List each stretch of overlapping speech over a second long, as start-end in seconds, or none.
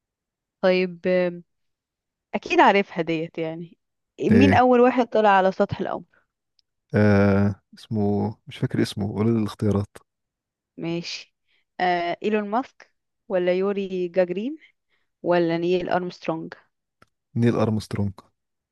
none